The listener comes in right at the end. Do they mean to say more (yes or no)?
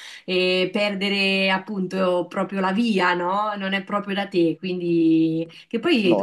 no